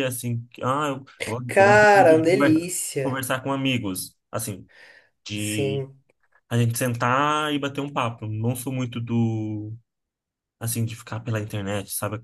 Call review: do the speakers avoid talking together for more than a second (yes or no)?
no